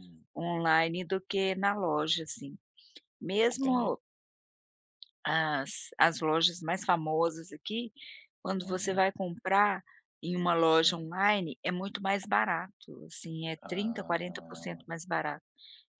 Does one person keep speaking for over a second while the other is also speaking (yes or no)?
yes